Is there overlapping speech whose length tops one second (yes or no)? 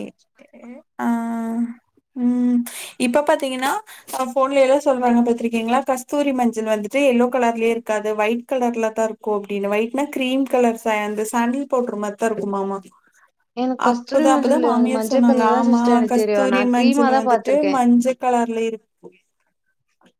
yes